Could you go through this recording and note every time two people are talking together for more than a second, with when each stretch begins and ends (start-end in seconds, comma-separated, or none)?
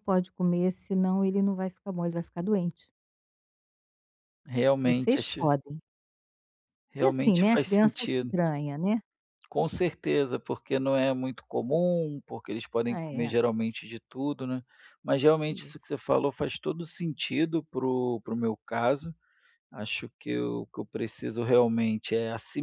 7.0-8.3